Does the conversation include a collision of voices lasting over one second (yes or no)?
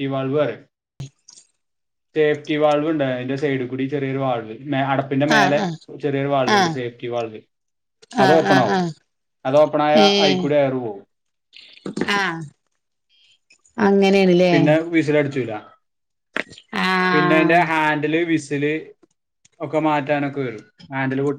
no